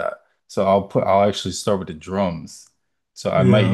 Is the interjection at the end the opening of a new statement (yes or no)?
no